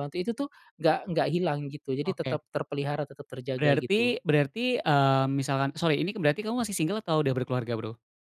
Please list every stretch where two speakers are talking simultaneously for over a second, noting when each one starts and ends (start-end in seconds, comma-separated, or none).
none